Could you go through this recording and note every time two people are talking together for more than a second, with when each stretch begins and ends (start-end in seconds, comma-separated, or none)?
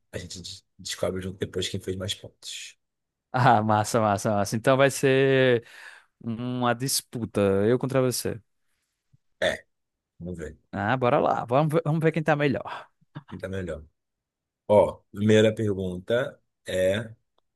none